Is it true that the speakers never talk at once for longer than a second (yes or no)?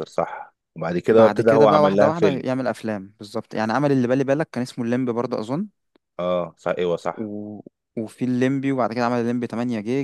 no